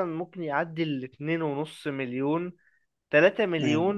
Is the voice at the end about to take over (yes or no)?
no